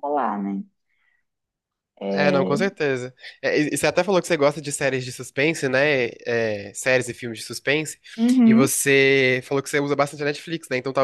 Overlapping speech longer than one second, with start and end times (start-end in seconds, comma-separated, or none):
none